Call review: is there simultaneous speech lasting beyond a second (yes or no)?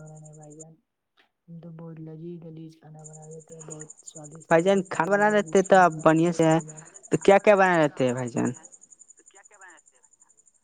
yes